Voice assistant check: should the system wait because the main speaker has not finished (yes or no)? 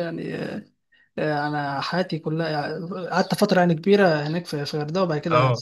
yes